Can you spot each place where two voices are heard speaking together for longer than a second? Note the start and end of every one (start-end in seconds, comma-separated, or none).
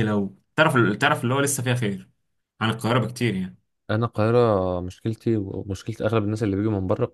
none